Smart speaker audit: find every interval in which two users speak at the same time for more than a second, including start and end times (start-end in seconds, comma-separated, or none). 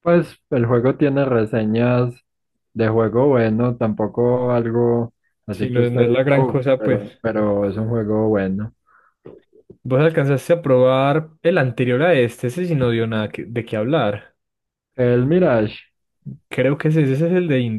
5.5-7.0